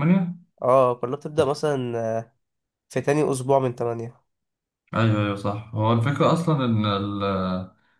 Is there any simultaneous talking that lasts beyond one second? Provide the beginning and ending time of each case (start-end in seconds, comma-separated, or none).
none